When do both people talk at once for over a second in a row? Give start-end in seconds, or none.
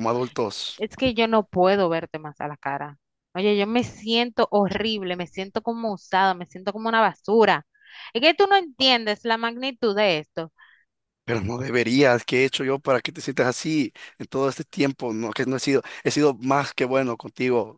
none